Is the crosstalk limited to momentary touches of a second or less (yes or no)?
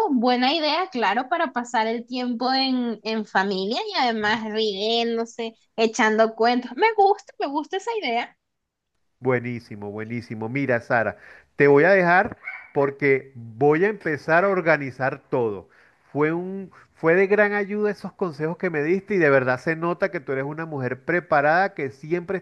yes